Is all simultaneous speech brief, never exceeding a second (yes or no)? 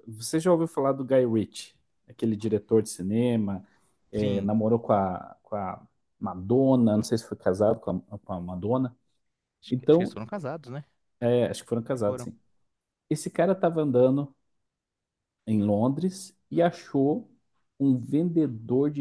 yes